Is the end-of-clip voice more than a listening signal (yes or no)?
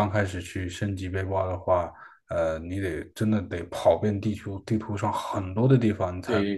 no